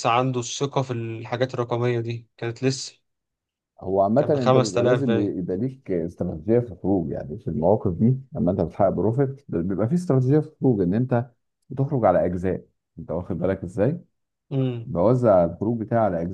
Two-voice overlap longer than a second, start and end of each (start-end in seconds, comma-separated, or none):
4.2-5.4